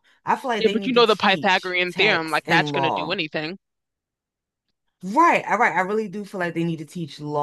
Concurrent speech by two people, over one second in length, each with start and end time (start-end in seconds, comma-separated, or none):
0.6-3.2